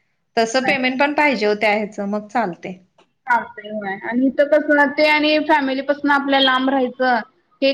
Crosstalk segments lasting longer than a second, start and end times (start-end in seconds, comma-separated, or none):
none